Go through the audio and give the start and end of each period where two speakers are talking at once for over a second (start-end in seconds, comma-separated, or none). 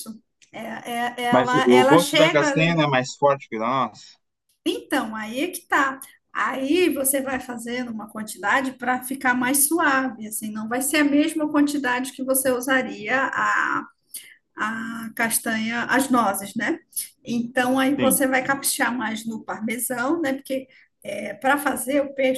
1.3-2.7